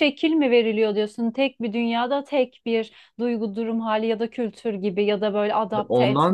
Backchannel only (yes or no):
no